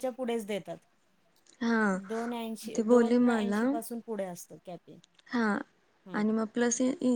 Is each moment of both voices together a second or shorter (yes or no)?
yes